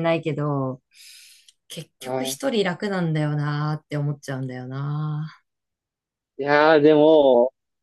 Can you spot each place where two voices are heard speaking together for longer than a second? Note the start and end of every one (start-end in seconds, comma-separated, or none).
none